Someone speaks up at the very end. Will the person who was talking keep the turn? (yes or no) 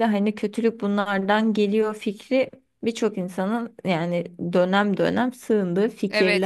no